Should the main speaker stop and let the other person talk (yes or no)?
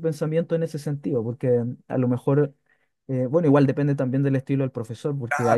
no